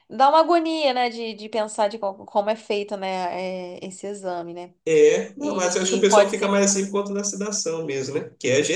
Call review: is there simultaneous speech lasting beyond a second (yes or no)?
yes